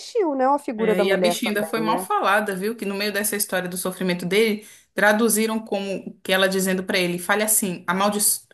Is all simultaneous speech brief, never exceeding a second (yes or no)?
no